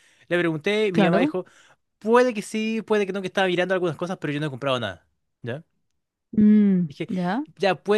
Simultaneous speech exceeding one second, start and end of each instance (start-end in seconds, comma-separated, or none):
none